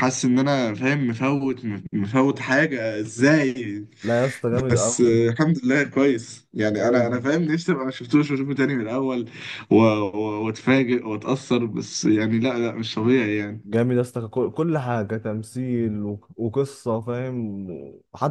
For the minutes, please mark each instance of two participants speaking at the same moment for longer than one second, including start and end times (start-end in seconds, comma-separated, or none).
none